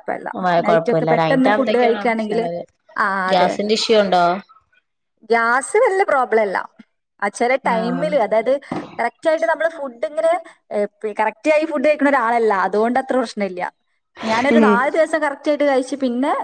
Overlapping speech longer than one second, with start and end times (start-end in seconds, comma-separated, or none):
0.7-2.4